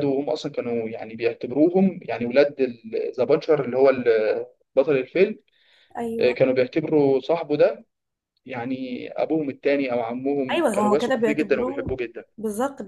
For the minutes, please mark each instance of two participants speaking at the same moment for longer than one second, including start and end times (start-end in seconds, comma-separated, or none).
10.5-12.0